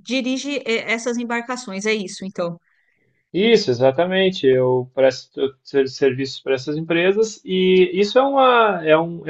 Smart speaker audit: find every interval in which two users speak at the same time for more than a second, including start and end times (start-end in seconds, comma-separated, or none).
none